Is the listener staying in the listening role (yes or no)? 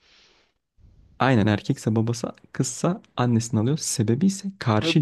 no